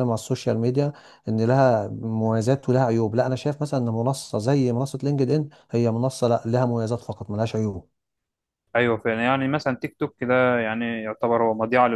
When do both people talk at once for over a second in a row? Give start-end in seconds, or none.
none